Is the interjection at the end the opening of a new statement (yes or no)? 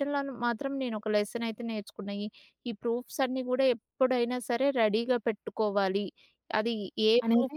no